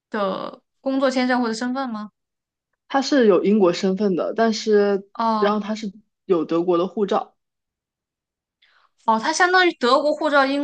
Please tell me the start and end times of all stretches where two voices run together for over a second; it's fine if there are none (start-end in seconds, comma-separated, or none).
none